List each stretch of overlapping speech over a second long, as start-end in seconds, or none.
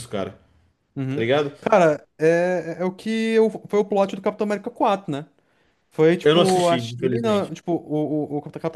6.2-7.5